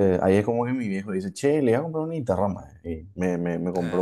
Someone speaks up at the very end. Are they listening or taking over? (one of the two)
listening